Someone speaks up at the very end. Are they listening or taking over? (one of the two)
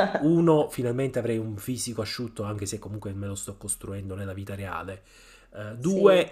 listening